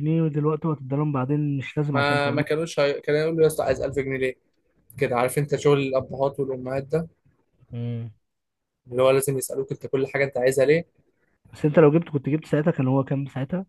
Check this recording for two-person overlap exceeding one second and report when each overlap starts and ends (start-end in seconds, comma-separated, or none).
none